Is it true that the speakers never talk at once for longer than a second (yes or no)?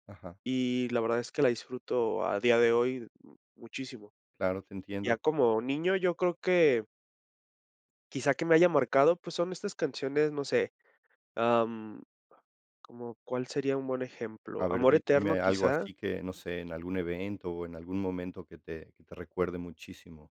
no